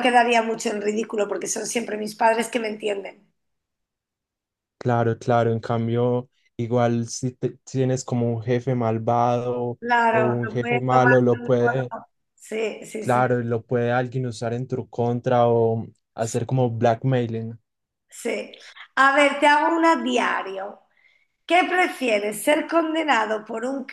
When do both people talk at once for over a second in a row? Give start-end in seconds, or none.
9.8-11.9